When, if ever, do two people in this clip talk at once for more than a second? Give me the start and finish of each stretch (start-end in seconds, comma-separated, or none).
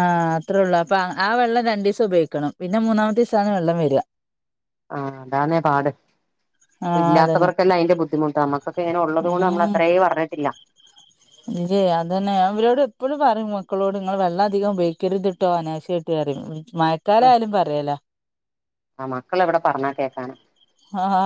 none